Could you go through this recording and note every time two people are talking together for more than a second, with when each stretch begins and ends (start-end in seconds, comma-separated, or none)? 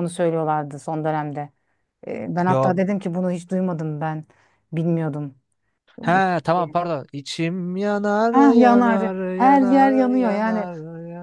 8.3-10.7